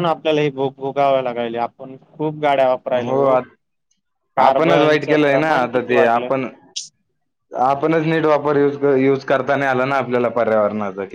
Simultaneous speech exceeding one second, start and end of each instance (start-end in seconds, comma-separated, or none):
4.4-6.3